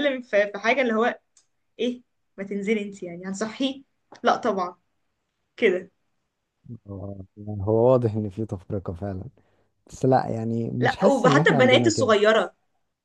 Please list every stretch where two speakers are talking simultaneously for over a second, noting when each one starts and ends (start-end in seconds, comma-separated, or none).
10.8-12.2